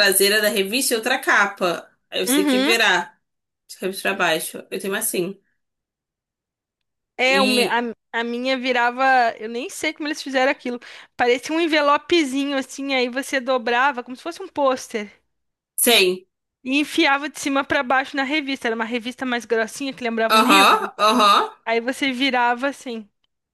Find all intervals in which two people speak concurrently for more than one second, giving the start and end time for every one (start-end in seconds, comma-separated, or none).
none